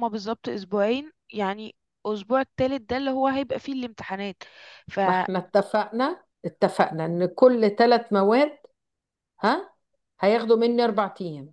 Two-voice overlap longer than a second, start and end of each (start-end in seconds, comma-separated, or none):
none